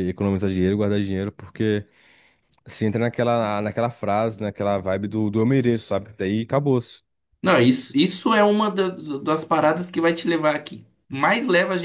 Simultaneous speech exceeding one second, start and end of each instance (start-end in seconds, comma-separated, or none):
none